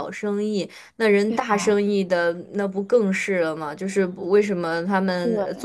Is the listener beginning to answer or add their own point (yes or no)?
no